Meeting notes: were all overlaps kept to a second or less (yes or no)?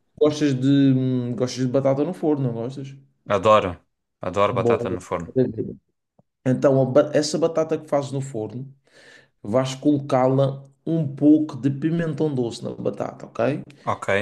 yes